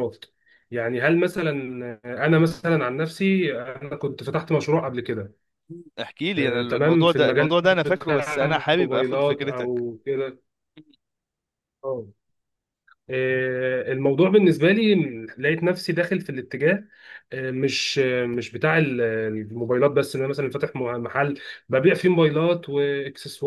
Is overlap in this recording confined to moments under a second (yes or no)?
no